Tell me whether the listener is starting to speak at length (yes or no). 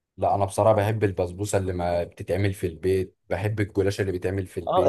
yes